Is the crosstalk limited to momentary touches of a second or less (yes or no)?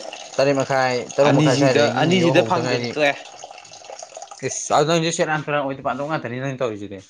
no